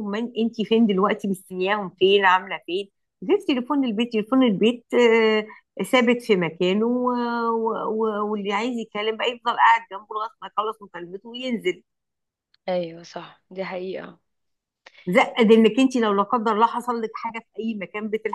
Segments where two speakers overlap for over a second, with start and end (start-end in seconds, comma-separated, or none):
none